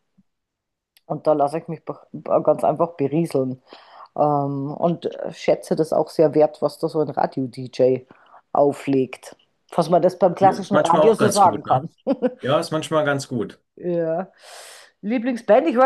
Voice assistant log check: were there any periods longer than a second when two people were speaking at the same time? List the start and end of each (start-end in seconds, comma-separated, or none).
10.4-11.9